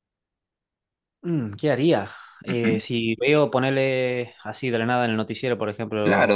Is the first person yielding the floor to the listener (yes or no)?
yes